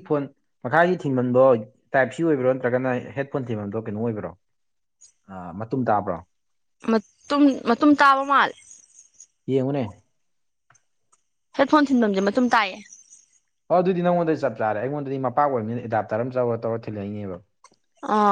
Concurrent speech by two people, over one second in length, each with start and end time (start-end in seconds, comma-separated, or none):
none